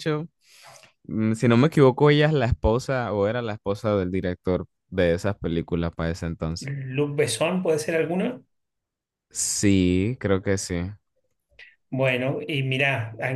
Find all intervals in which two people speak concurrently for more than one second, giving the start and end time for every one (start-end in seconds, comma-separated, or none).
none